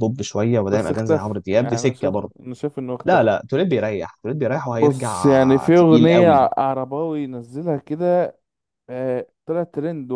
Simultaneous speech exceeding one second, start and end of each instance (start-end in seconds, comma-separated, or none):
0.7-2.3, 4.7-6.4